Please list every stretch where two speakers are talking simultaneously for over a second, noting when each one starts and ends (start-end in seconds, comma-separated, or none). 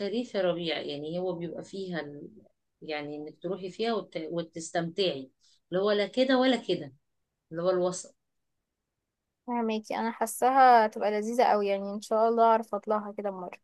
none